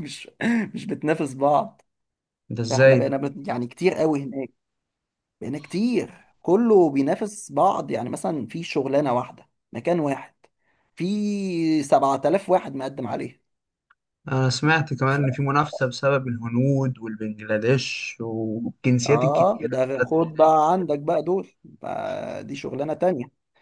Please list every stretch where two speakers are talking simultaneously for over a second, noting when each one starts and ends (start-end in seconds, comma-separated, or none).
19.1-20.5